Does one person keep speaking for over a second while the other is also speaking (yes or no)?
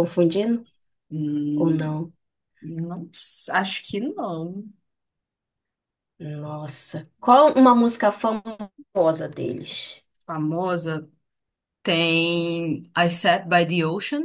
no